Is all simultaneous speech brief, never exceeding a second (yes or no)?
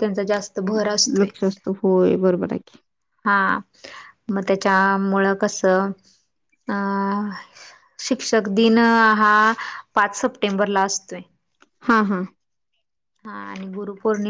yes